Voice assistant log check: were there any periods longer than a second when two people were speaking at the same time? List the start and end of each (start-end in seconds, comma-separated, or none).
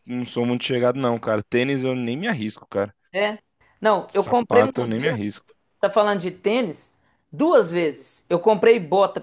4.1-5.3